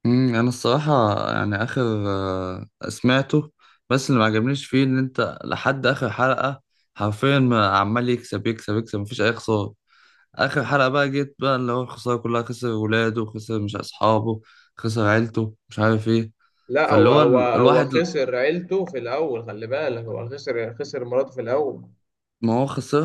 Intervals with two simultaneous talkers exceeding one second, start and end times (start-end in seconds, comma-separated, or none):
16.8-18.1